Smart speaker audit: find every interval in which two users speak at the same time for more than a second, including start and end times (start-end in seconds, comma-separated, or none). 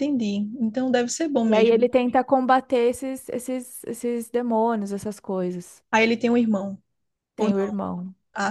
none